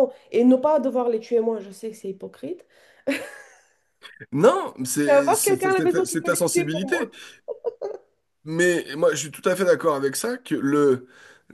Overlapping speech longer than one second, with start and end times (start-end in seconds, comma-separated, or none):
5.0-7.0